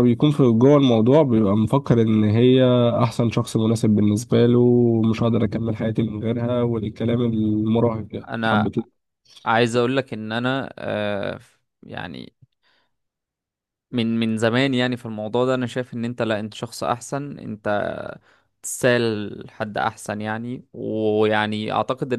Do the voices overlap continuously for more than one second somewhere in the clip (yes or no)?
no